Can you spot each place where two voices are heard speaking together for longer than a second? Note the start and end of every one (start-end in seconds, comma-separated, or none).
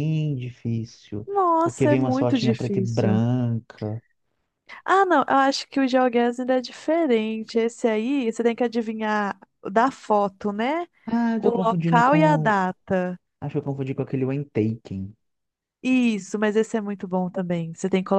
1.3-3.2, 11.4-12.6